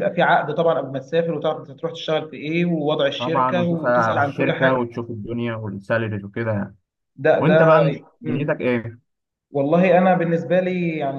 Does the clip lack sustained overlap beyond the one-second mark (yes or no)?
no